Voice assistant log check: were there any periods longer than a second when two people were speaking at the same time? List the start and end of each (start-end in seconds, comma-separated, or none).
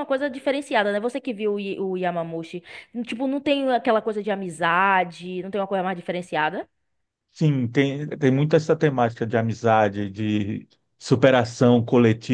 none